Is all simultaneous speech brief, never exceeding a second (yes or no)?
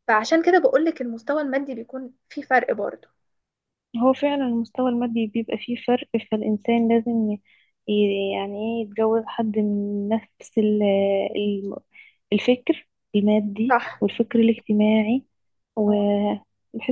yes